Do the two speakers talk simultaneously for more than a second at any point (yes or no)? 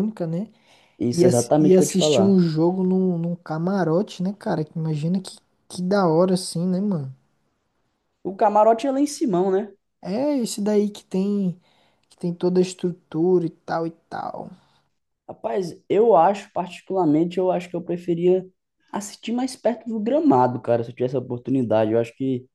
yes